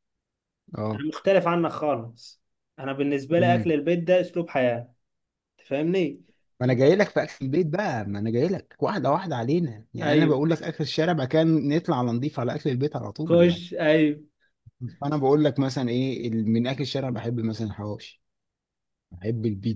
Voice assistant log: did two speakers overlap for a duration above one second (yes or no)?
no